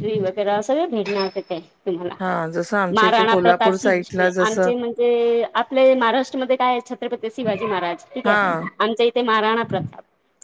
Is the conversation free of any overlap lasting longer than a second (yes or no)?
no